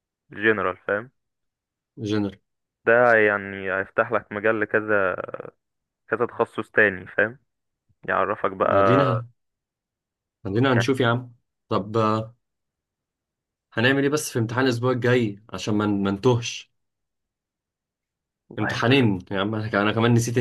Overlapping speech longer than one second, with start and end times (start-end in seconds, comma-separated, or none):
none